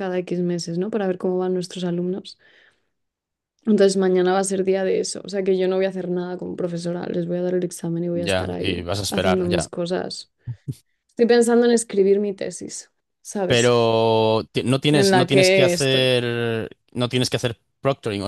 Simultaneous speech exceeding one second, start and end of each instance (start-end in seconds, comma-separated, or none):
8.1-9.7, 14.9-16.1